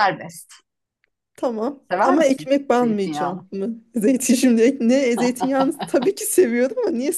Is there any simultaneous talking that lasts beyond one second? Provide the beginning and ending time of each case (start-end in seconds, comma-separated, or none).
1.9-3.5